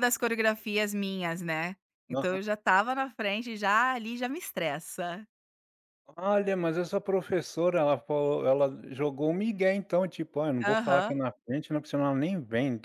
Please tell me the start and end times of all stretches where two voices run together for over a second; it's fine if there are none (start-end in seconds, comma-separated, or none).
none